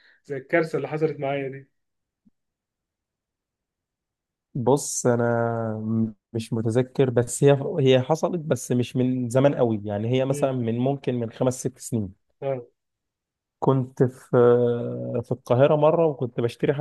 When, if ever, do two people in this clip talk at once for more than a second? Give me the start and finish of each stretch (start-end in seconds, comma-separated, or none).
none